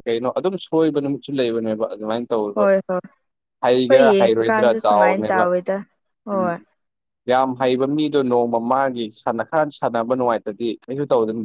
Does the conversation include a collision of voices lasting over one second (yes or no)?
yes